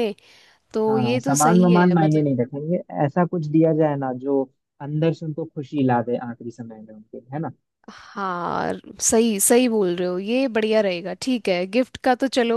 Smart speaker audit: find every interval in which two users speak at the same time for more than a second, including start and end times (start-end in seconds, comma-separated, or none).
0.9-2.3